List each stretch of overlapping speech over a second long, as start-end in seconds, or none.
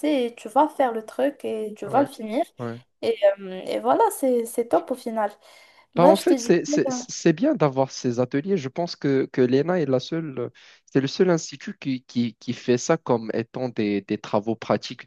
none